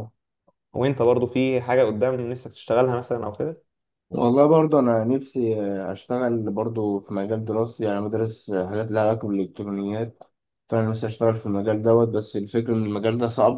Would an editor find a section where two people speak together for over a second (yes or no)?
no